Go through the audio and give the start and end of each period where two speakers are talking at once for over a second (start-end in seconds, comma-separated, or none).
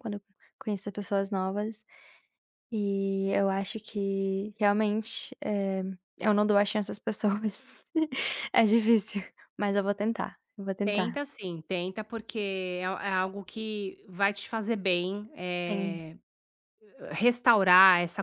none